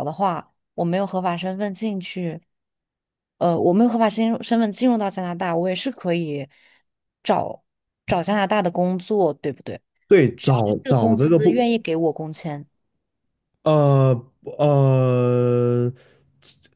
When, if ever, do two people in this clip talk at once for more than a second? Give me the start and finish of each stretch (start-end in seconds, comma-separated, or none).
10.3-11.6